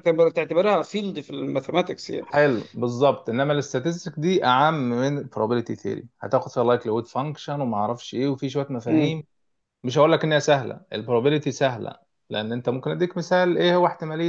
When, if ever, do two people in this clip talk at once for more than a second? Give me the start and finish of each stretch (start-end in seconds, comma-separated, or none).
none